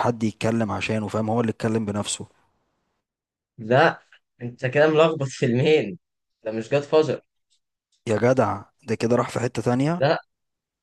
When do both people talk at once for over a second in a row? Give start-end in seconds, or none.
none